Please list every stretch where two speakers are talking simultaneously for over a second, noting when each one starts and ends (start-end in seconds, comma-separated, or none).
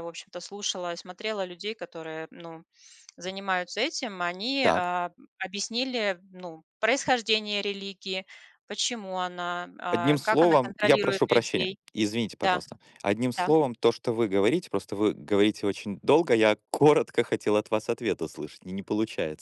9.9-11.8